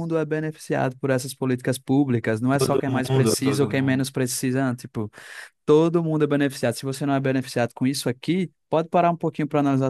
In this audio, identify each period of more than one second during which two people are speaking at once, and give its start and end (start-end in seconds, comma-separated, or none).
2.5-4.0